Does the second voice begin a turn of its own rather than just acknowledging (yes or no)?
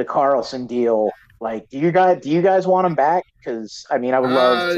yes